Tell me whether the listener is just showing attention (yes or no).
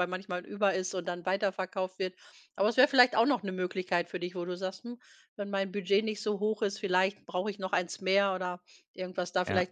yes